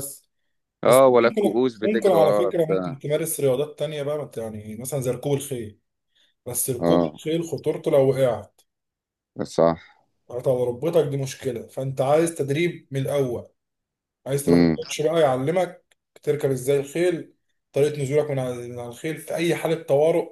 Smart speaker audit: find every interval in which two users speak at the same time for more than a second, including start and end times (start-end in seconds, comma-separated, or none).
0.9-3.0